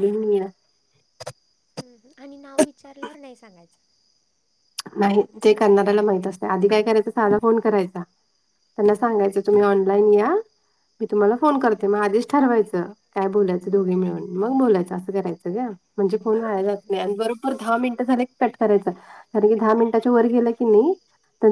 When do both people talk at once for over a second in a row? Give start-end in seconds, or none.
none